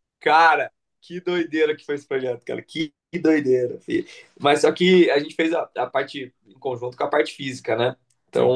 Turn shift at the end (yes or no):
no